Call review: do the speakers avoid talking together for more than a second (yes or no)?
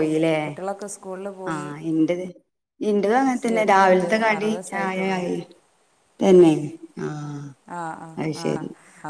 no